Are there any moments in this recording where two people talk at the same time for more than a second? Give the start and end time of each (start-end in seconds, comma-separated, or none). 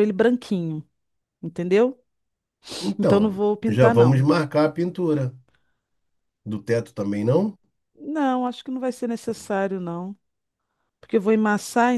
3.0-4.3